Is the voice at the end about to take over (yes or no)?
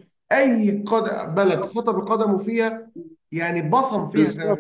yes